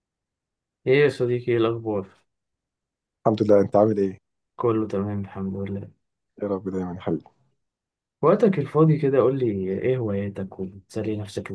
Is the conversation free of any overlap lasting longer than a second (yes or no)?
yes